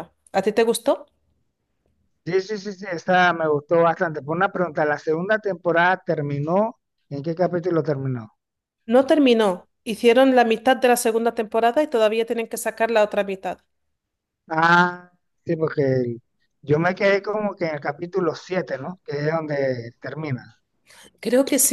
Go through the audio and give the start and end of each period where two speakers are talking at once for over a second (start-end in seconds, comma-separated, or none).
none